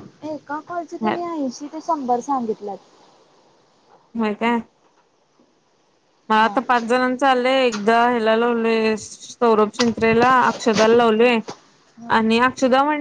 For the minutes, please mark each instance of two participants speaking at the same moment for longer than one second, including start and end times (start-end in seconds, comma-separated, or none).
none